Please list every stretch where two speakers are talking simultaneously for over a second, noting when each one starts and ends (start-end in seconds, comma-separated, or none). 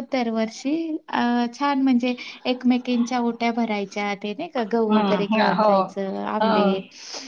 4.9-6.7